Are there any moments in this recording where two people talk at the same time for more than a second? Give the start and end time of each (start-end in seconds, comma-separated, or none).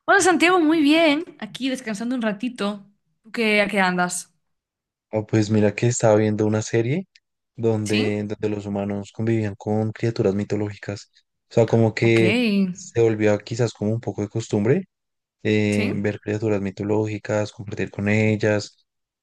none